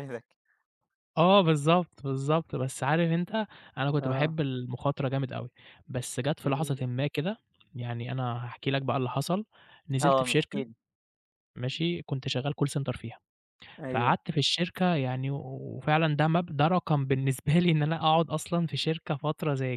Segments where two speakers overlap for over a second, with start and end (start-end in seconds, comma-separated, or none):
none